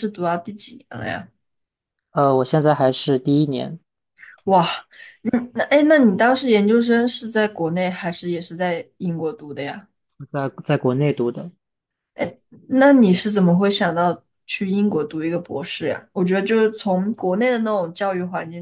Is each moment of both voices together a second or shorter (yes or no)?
yes